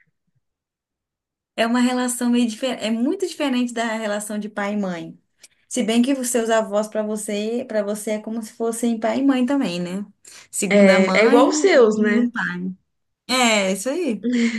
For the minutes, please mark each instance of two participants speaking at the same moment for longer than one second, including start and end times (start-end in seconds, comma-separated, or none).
10.7-12.2